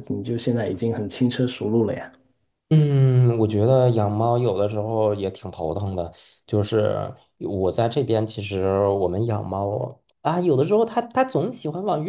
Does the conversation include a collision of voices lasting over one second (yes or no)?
no